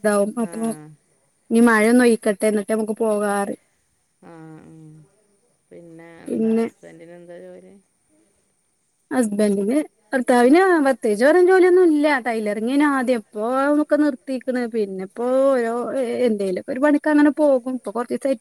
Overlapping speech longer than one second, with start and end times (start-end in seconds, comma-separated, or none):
none